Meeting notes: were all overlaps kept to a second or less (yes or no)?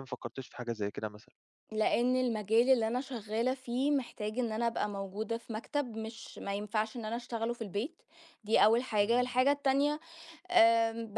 yes